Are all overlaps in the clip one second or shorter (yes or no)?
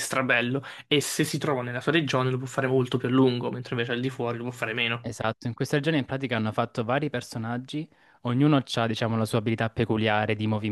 yes